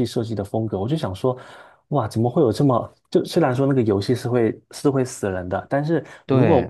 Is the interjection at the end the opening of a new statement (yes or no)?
no